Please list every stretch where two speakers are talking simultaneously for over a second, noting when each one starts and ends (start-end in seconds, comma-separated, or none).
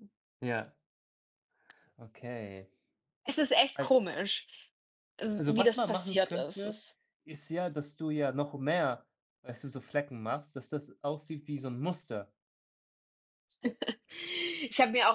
5.4-6.8